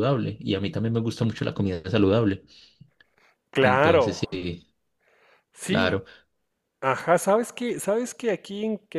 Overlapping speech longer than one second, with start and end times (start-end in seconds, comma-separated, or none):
none